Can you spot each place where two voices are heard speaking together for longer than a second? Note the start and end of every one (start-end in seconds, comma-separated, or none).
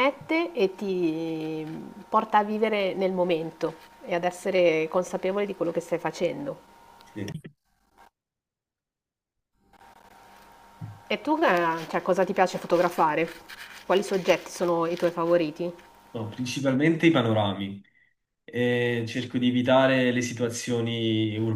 none